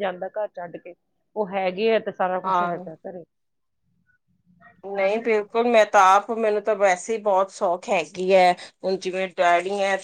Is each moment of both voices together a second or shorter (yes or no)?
yes